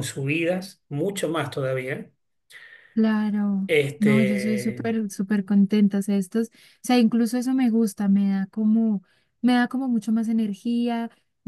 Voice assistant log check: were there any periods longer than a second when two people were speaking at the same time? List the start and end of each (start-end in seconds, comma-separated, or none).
3.7-4.9